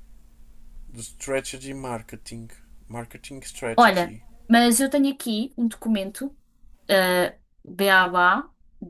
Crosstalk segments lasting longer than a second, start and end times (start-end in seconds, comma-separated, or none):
none